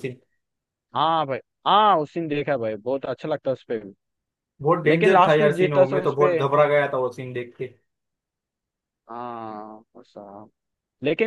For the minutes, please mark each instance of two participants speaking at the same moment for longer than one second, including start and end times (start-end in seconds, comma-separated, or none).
4.9-6.4